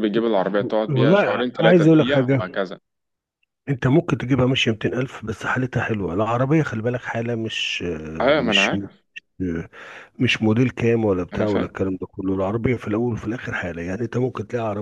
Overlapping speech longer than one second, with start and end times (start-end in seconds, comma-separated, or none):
0.9-2.6